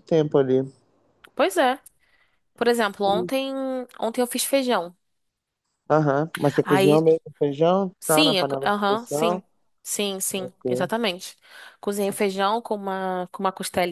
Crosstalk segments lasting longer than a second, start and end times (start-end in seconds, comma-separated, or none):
8.0-9.4